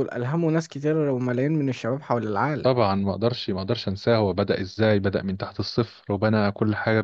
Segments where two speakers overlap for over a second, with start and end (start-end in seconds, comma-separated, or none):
none